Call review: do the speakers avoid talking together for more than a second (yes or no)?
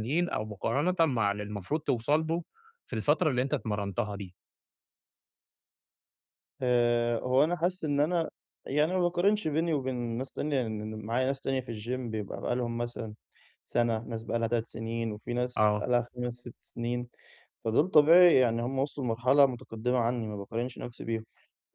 yes